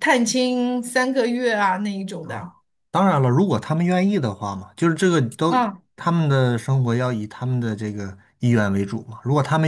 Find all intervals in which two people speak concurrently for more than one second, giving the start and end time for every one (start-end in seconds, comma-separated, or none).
none